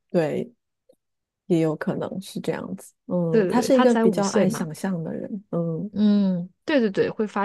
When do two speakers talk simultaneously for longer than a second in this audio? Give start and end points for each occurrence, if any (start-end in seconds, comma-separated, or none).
3.3-4.7